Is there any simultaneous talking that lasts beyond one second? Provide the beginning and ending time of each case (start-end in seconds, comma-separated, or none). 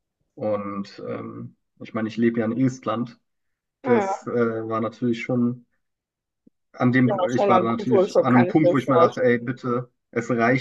7.0-9.4